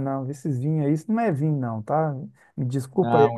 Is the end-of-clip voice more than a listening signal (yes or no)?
no